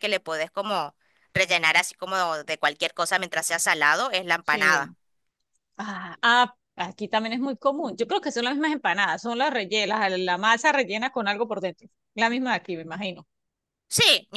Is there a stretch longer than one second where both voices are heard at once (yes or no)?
no